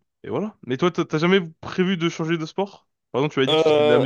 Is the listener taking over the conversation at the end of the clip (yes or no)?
no